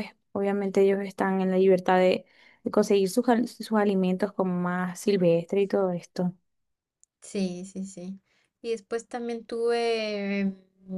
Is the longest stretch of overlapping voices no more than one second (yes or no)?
yes